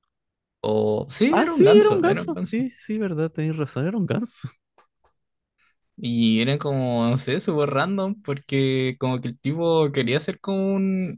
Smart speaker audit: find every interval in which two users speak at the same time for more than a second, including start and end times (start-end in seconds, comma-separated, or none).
1.3-2.6